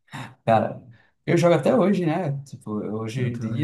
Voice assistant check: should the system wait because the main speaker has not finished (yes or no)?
yes